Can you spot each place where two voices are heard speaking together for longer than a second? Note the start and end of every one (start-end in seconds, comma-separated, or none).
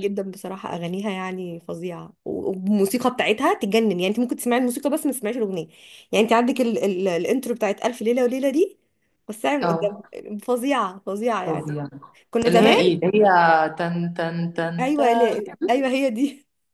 none